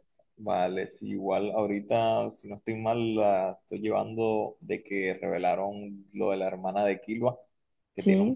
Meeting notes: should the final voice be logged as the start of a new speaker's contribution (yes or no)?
no